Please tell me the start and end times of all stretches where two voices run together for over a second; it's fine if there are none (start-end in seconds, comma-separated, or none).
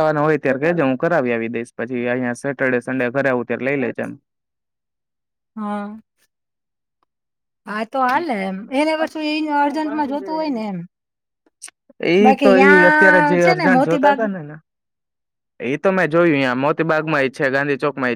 12.2-14.2